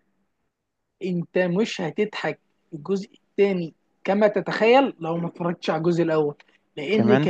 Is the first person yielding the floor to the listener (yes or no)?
no